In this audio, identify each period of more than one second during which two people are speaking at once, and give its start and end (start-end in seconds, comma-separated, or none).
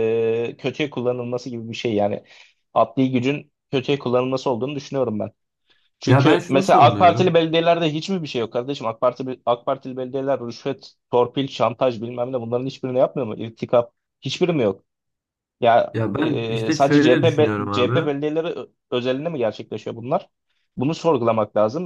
6.0-7.4, 15.9-18.1